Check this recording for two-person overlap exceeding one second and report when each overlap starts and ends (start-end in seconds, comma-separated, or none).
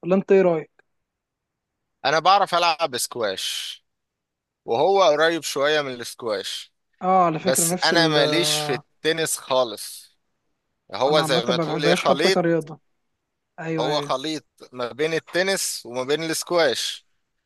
7.4-8.8, 11.1-12.4